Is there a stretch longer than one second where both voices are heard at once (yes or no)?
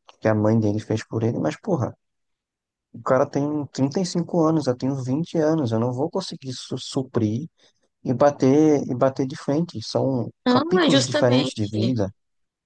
yes